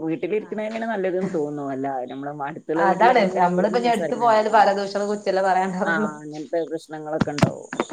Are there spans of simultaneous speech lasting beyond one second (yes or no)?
yes